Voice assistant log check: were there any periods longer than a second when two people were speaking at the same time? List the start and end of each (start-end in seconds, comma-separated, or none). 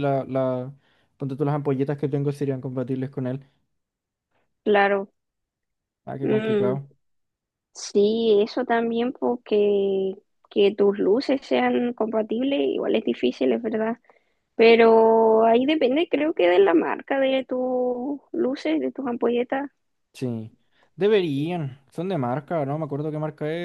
none